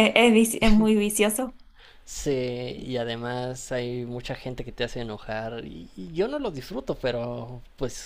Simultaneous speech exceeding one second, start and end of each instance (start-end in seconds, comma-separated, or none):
none